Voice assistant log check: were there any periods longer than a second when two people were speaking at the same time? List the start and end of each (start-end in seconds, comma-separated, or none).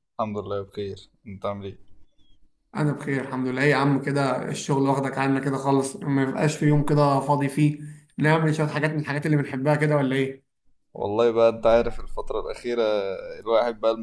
none